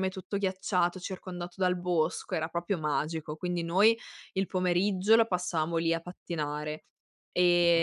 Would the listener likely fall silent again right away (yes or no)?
yes